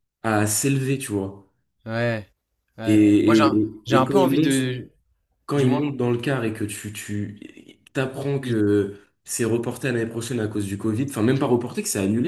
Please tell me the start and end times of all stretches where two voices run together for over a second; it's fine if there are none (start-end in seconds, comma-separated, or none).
2.9-4.8